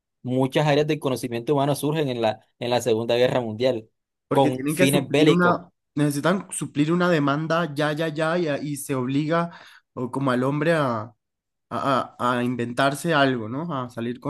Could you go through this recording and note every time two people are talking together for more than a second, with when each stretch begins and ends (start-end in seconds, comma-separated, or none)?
4.3-5.6